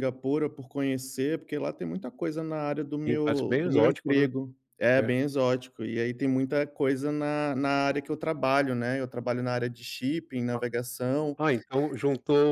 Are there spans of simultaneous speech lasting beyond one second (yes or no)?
yes